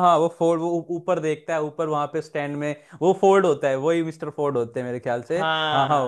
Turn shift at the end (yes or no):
yes